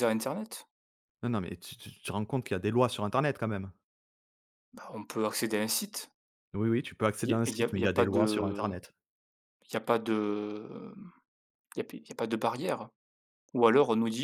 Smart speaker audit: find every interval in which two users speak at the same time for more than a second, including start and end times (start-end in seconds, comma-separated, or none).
7.2-8.7